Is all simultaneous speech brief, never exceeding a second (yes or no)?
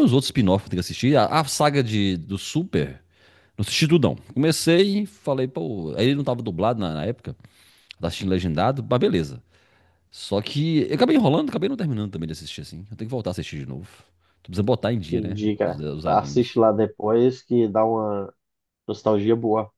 no